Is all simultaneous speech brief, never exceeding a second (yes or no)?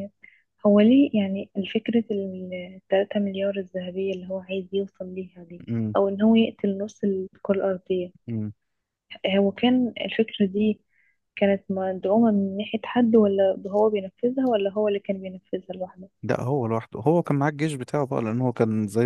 yes